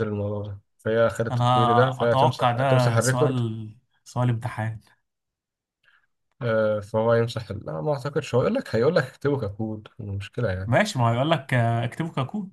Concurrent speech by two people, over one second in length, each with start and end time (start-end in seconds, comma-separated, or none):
1.3-3.4